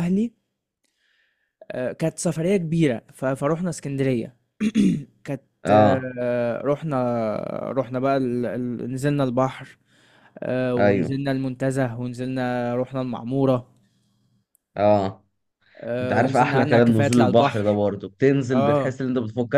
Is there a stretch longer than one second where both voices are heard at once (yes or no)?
yes